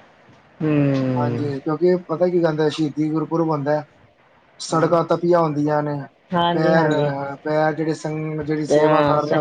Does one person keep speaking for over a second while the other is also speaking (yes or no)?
no